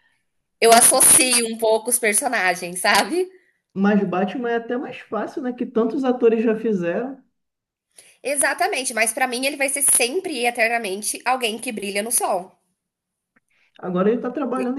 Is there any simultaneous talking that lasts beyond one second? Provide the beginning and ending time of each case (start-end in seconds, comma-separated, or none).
none